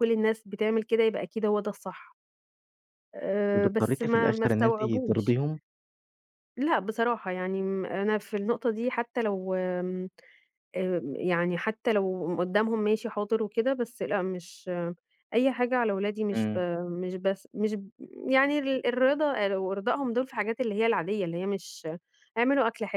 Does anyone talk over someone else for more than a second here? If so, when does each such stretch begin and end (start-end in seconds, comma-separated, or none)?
3.5-5.3